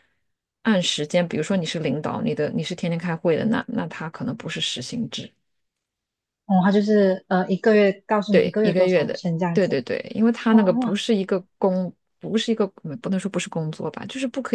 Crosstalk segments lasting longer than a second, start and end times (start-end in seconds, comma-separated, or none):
8.3-9.8